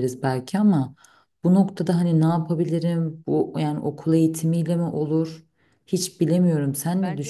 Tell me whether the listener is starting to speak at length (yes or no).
yes